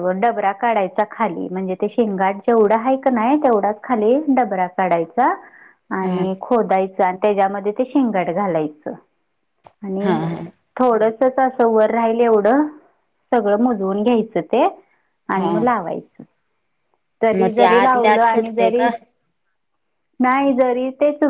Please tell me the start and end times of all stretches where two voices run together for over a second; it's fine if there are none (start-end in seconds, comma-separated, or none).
17.4-18.9